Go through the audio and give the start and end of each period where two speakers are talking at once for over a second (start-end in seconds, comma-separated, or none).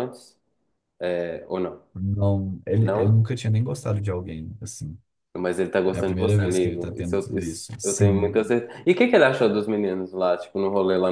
5.9-8.4